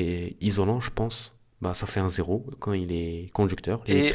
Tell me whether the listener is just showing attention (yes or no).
no